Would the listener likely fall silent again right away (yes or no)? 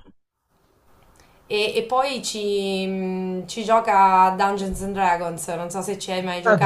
no